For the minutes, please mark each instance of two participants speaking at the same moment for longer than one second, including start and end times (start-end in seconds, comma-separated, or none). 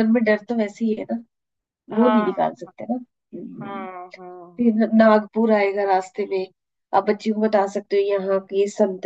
none